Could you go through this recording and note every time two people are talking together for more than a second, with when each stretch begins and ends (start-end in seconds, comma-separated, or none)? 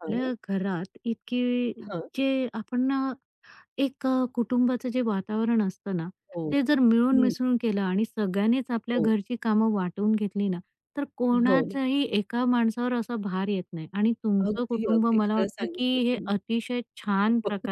14.4-16.4